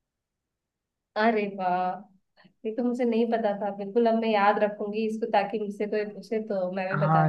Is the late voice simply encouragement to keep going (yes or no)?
no